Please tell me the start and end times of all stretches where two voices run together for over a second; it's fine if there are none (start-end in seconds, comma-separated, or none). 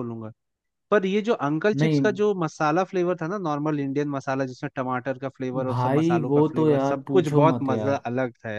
5.7-8.1